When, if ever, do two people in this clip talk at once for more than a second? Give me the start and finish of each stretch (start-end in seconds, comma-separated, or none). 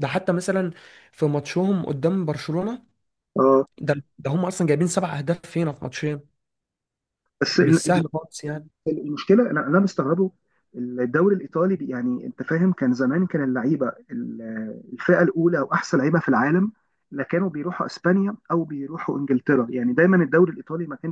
none